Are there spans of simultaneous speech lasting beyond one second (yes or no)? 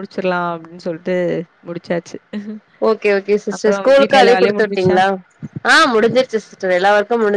yes